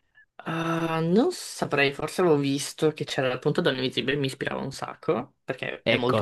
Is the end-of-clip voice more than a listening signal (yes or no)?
yes